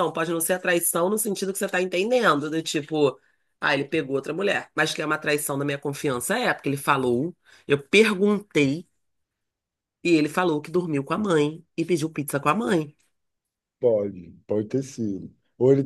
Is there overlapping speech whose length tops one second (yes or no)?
no